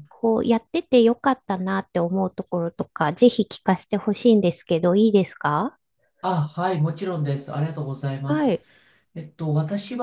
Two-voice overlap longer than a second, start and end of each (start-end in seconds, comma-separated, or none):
none